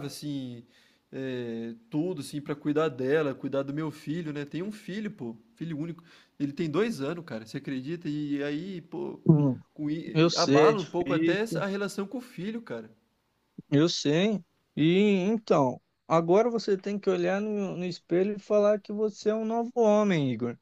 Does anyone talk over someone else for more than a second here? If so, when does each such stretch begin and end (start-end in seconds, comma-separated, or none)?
10.1-11.7